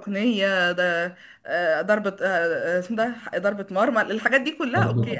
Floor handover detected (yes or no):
yes